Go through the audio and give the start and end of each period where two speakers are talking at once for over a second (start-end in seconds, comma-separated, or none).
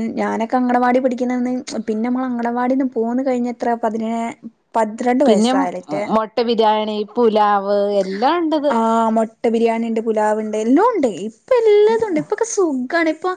none